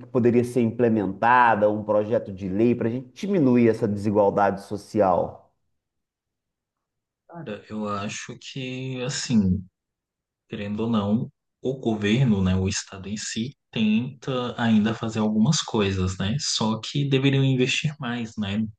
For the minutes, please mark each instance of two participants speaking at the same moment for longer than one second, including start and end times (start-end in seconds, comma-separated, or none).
none